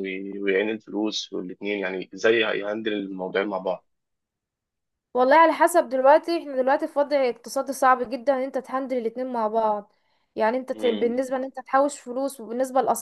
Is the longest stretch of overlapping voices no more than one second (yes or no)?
yes